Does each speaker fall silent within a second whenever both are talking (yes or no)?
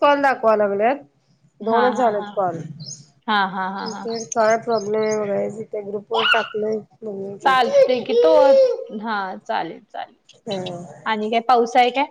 yes